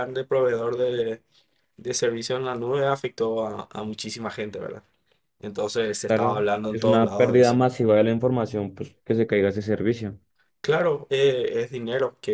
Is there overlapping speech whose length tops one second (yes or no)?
yes